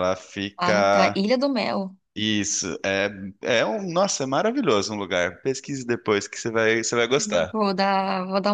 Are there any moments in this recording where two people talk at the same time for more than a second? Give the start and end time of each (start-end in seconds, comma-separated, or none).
none